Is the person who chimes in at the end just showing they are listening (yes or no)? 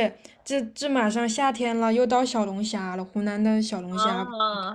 yes